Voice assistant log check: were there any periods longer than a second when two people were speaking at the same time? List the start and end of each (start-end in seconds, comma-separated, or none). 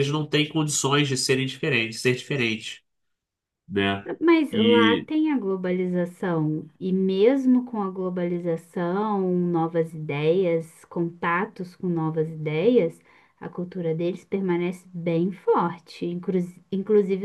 none